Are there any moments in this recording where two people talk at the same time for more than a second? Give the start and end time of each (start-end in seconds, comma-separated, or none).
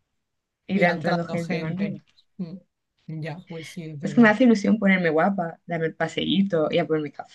0.7-1.9